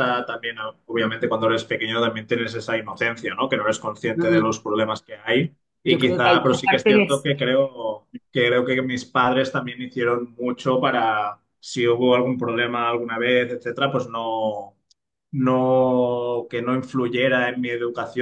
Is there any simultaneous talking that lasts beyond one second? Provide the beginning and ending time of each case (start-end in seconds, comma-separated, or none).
5.8-7.3